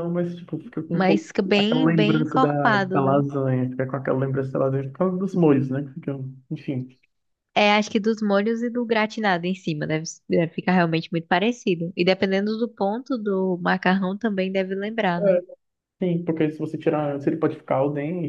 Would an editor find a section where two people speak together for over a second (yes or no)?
yes